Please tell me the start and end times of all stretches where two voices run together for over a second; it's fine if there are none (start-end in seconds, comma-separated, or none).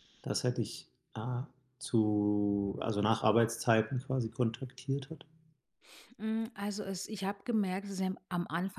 none